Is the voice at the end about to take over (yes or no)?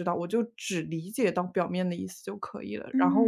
yes